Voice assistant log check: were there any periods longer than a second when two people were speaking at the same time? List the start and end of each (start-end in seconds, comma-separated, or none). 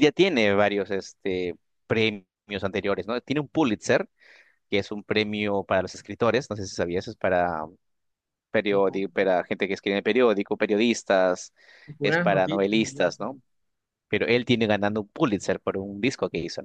12.0-13.3